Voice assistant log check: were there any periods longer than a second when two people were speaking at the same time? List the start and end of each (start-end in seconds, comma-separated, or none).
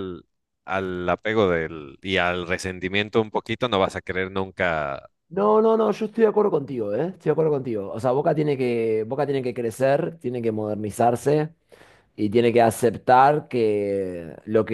none